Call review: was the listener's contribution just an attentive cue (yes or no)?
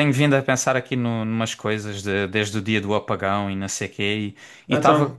yes